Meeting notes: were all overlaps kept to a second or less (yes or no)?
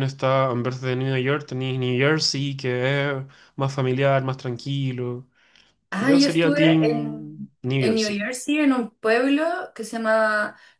no